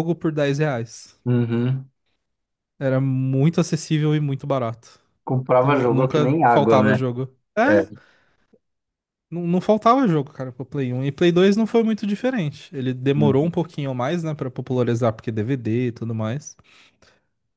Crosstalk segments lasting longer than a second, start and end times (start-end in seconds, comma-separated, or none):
5.6-7.0